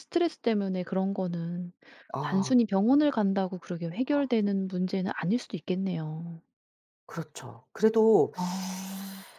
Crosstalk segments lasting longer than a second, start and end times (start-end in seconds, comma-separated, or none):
none